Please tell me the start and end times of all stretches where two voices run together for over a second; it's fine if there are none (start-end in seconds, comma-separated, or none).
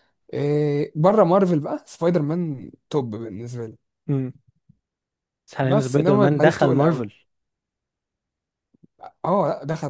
5.6-7.1